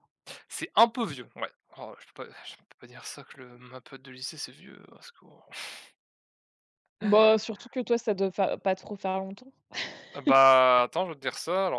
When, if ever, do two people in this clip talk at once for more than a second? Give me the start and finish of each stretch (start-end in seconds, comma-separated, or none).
none